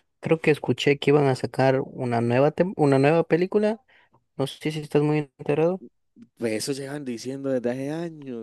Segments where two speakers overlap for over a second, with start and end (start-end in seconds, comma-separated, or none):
none